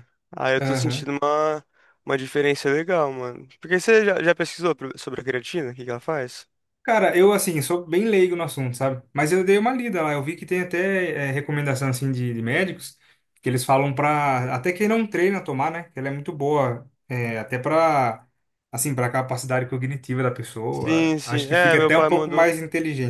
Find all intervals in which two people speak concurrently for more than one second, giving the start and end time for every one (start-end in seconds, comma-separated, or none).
20.7-22.5